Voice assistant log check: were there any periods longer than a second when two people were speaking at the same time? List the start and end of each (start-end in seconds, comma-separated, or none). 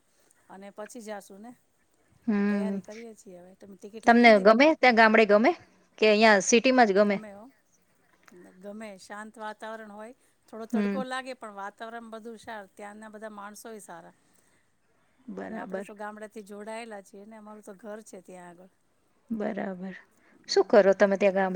none